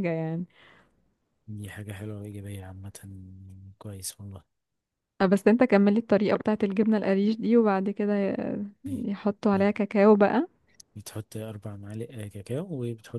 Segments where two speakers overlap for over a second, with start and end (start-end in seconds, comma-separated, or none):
none